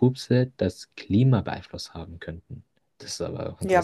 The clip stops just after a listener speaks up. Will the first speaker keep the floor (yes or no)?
no